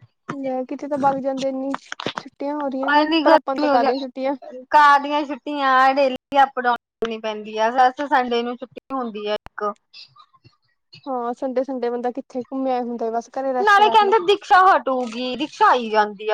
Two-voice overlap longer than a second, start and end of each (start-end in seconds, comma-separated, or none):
2.9-4.3